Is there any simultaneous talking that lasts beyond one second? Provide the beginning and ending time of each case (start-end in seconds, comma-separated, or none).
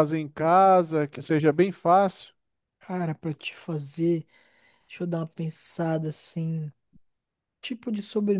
none